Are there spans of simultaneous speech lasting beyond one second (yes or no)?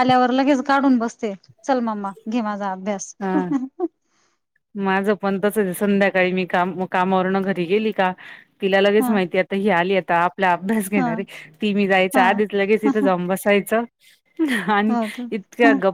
no